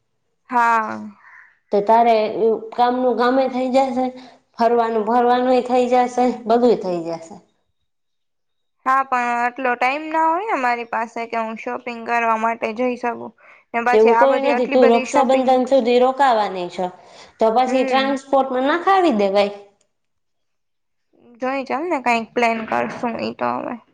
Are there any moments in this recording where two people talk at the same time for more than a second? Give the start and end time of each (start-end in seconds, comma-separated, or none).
13.9-15.5